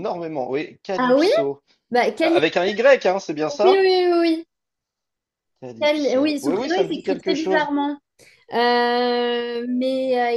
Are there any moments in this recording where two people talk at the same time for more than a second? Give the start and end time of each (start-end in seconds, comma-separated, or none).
5.8-7.7